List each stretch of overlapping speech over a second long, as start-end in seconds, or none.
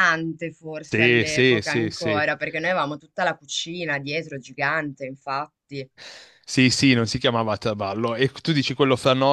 0.8-2.2